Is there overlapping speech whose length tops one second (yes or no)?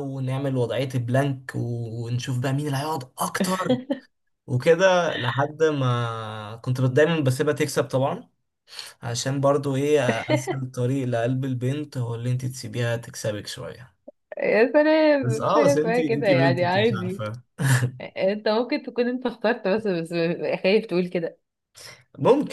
yes